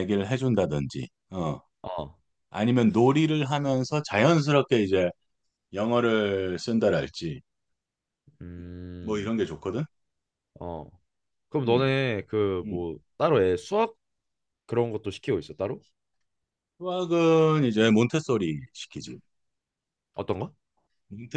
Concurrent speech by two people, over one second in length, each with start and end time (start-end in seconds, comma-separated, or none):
none